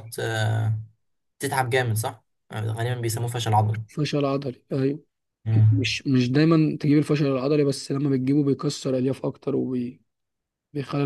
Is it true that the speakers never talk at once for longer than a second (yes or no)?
yes